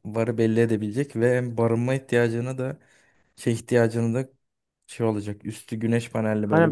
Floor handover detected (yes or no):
yes